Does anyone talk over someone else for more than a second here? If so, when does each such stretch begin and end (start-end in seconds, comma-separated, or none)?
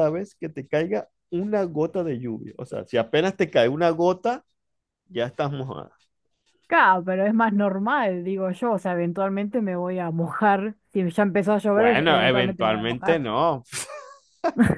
11.7-13.2